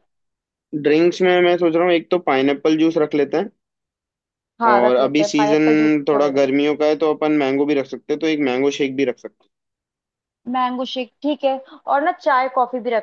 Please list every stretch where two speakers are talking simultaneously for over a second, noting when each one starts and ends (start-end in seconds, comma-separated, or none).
4.7-6.4